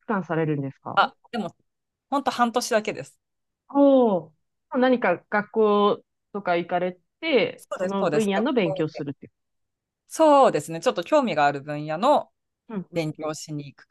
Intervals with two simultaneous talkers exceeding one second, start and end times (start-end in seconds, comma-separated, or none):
7.5-9.0